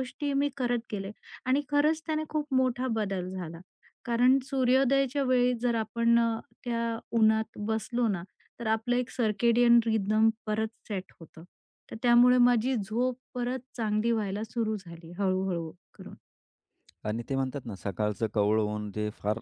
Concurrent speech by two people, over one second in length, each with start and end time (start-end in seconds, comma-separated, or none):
none